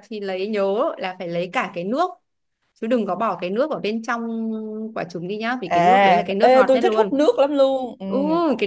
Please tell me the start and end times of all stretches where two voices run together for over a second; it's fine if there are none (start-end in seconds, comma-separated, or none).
5.7-7.2